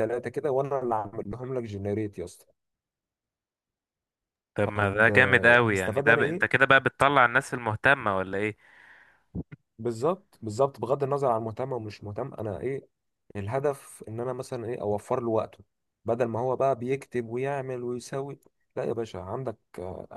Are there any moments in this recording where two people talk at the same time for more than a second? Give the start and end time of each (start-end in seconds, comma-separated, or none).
4.6-6.6